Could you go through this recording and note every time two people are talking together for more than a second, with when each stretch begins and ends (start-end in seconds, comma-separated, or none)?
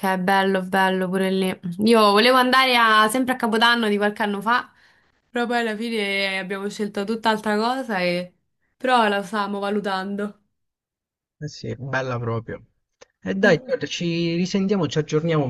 none